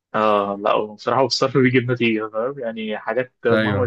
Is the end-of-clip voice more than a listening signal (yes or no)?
no